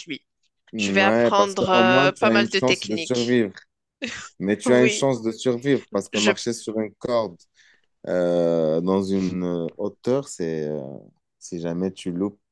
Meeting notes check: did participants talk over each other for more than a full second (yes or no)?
yes